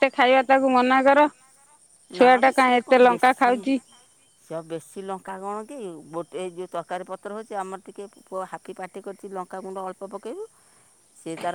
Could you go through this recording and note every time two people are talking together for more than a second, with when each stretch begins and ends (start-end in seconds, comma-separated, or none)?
none